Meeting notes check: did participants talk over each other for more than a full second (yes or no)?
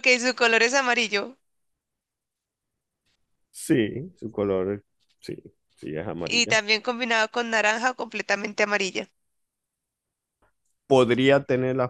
no